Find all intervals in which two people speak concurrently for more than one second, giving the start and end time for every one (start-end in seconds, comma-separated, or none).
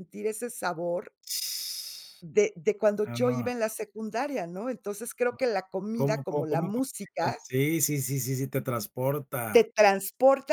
5.9-7.4